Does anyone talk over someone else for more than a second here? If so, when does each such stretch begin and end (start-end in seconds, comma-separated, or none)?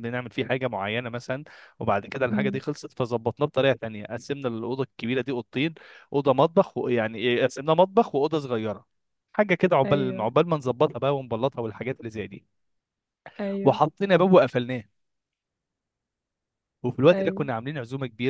none